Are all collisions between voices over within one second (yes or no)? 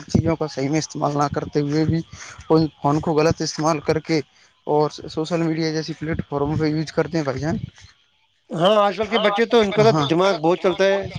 yes